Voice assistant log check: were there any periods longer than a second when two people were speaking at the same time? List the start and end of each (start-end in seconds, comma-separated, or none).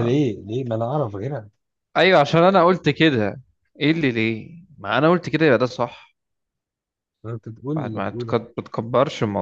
none